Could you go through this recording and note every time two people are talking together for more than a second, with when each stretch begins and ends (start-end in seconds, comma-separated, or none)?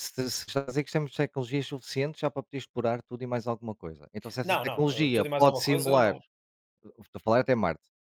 4.4-6.1